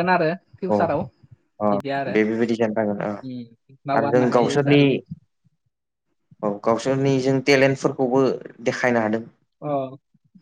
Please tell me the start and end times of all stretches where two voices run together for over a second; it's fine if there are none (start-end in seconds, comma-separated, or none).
3.2-4.8